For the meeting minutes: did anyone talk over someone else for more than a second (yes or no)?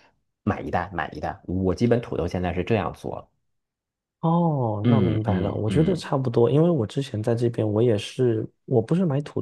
yes